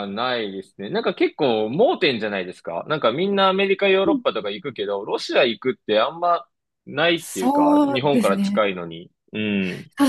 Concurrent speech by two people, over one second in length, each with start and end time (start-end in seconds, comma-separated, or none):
7.1-8.6